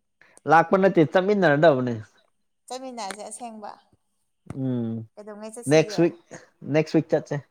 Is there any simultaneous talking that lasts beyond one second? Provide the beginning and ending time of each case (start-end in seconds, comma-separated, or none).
none